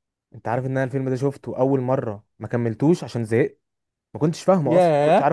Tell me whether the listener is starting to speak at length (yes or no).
no